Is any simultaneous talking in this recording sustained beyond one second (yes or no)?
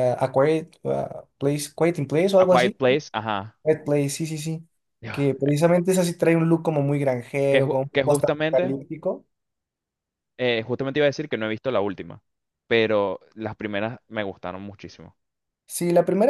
yes